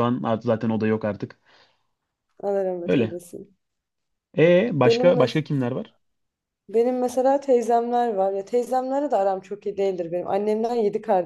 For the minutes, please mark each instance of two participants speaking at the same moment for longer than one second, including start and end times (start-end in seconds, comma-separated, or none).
none